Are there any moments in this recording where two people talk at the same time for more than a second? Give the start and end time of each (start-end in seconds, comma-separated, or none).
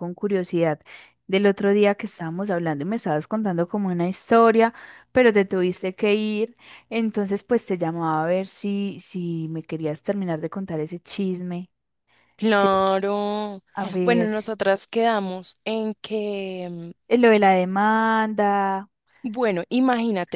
none